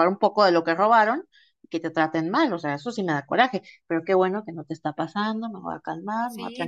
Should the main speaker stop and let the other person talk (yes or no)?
yes